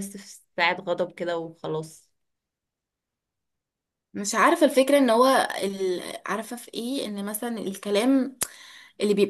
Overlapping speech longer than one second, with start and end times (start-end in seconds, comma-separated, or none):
none